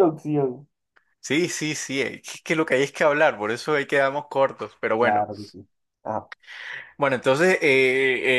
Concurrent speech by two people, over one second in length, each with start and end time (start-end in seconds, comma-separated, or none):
none